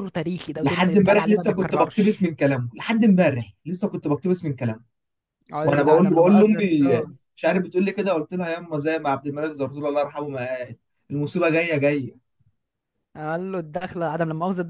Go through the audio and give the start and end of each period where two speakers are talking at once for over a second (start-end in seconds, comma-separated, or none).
0.6-2.3, 5.6-6.9